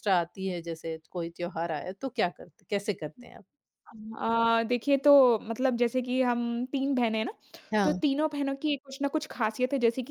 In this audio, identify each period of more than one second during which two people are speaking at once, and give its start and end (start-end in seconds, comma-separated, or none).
none